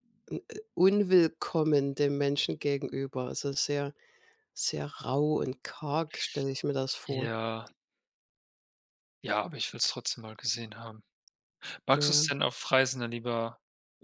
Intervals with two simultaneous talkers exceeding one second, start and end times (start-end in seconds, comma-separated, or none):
none